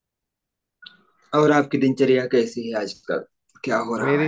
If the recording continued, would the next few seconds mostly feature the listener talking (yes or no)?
yes